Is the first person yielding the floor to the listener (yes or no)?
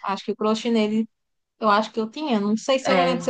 no